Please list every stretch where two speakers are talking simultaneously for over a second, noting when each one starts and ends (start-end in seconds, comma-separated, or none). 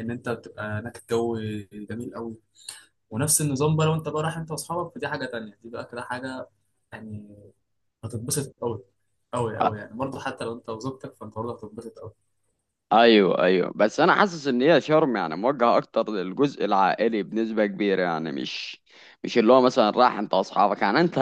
none